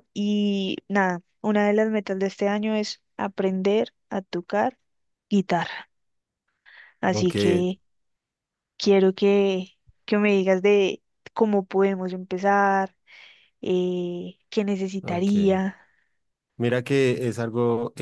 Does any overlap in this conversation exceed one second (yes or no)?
no